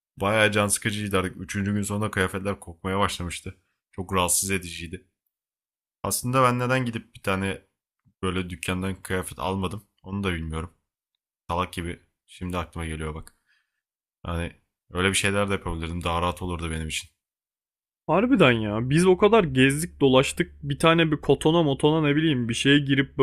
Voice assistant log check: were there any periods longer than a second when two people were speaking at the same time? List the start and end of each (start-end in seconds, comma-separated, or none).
none